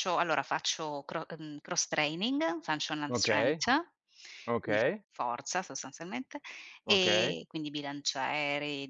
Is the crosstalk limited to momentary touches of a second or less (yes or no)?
yes